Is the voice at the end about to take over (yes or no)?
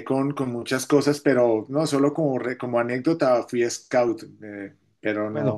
yes